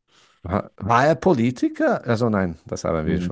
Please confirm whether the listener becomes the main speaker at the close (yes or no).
no